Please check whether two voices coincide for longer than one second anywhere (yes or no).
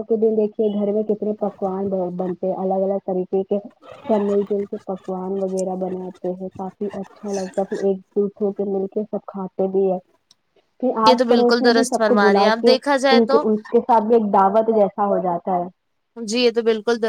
yes